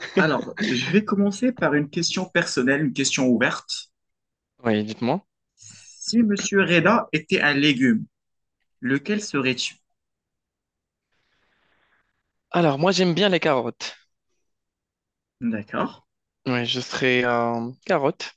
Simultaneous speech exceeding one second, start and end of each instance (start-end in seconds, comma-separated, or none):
none